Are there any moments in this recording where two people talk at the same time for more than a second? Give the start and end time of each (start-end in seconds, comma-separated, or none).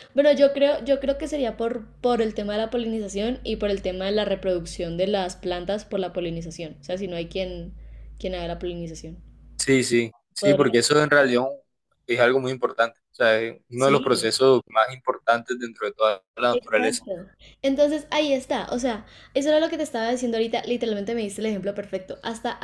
none